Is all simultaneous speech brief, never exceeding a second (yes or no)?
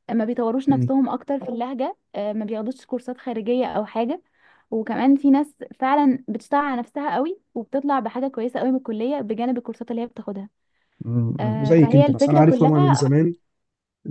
no